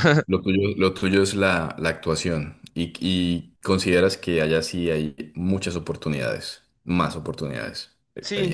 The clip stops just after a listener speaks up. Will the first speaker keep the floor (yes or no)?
no